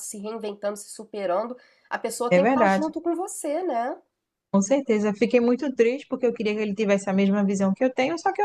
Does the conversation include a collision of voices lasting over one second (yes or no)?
no